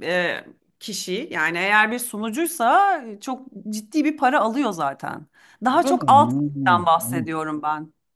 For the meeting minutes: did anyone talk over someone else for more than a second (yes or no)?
yes